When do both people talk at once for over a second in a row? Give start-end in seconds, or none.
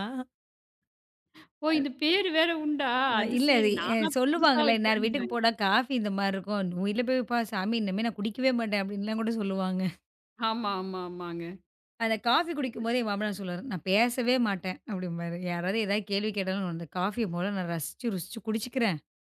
3.2-5.5